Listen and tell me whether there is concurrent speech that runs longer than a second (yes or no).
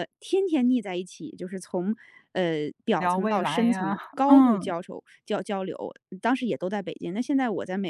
yes